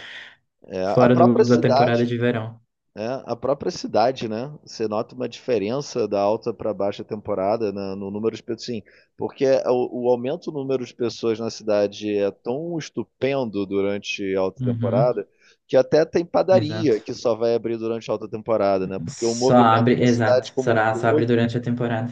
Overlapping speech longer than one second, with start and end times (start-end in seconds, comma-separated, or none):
0.8-2.1, 19.1-21.4